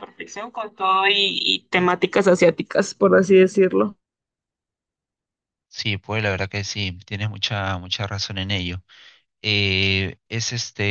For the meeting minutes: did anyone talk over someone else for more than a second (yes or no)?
no